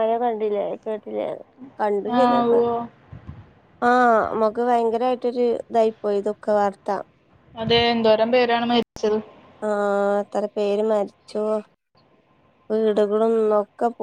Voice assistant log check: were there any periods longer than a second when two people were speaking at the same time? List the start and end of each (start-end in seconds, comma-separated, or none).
none